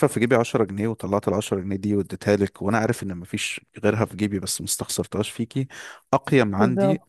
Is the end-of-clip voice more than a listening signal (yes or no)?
no